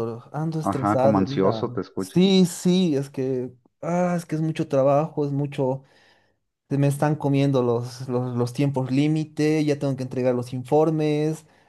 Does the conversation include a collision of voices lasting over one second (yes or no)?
yes